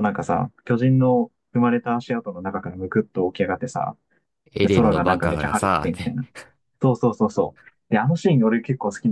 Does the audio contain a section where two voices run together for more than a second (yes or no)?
yes